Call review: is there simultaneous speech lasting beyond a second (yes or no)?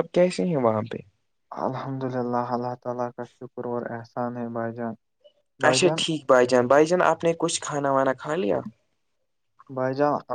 no